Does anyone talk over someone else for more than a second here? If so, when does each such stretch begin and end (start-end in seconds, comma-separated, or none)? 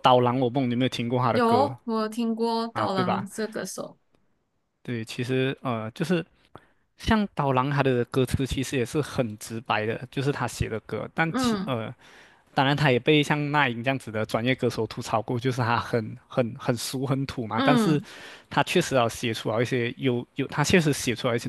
none